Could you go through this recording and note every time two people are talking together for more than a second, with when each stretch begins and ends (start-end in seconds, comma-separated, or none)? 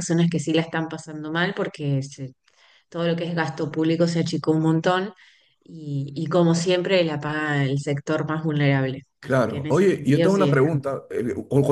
9.2-10.7